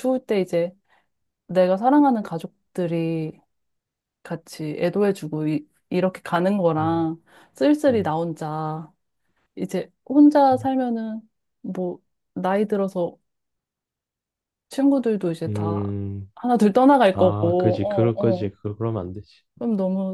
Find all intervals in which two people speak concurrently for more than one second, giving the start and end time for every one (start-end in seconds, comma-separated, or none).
17.1-18.5